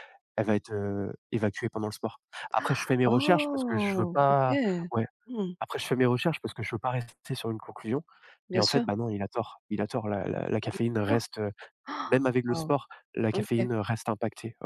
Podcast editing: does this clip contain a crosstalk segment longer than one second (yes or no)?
yes